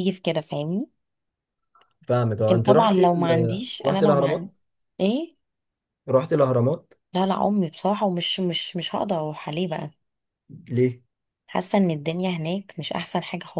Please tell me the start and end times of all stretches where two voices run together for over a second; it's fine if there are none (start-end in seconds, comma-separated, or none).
2.4-4.5